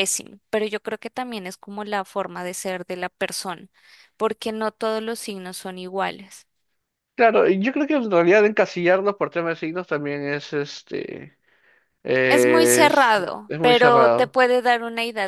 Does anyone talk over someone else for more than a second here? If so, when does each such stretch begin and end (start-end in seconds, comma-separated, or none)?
12.3-14.4